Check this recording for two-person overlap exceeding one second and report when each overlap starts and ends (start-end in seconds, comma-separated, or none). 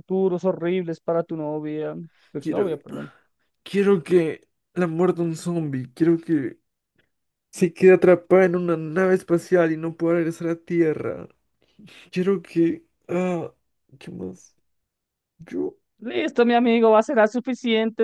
none